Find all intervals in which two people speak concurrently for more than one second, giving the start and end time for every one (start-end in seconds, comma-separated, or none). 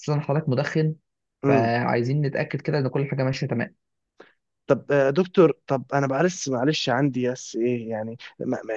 none